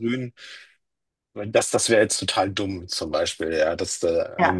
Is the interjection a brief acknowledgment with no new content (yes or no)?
yes